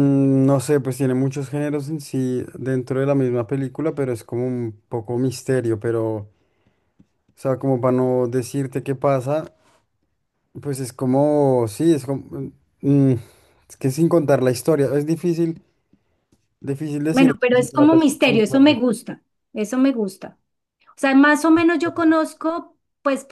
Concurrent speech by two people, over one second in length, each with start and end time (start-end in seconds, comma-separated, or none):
17.1-18.8